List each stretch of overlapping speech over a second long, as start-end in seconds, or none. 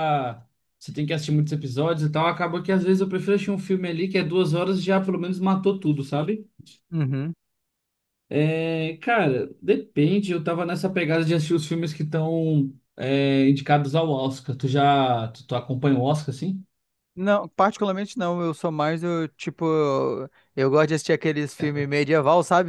none